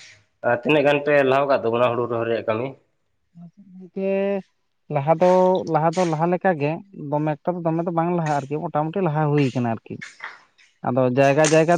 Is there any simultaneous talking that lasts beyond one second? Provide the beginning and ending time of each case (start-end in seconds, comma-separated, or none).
none